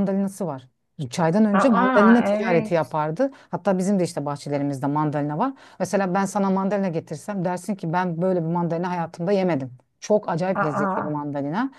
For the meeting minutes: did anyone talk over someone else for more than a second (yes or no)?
yes